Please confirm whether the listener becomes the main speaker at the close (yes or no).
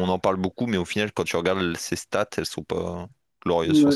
yes